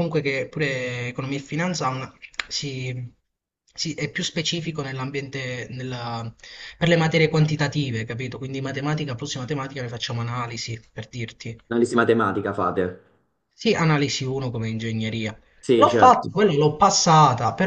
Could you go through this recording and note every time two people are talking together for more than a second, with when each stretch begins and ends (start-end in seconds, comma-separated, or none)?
none